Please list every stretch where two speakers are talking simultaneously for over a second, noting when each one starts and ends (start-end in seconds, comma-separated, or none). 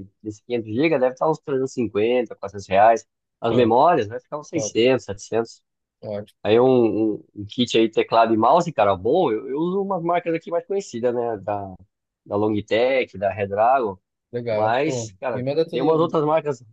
14.5-16.2